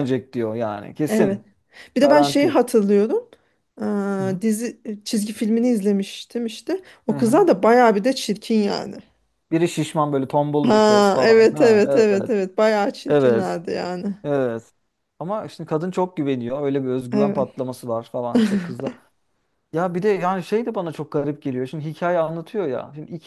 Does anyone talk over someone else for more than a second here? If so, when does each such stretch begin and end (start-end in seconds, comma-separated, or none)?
10.7-12.3